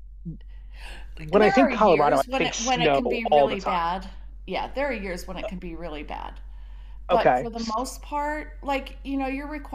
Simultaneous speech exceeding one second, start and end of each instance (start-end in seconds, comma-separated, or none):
1.4-3.9